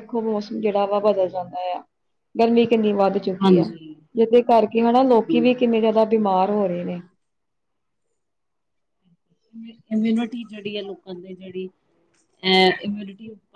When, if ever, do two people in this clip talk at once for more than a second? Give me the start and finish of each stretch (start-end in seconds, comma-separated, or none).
none